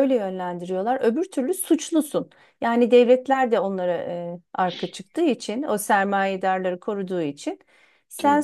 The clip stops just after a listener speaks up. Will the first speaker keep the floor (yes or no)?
yes